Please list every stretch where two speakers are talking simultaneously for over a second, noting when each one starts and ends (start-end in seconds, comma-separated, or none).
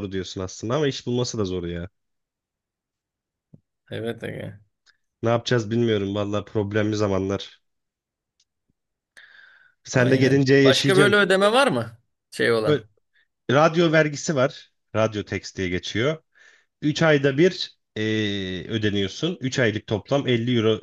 9.9-11.2